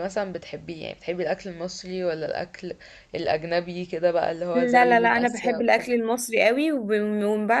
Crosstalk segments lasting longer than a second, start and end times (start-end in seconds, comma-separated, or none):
4.5-5.8